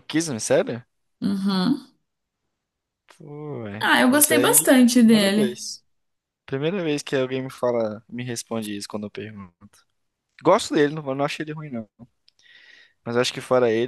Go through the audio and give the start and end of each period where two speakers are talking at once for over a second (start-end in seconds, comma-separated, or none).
3.8-5.6